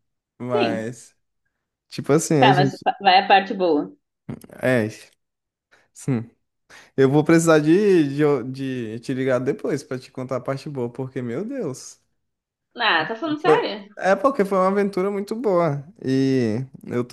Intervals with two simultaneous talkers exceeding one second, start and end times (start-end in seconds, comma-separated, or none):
none